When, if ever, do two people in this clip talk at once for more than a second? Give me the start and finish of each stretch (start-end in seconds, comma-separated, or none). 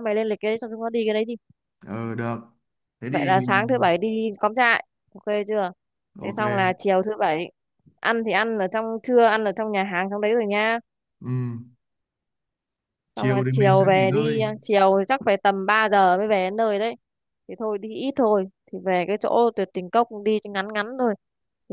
13.2-14.4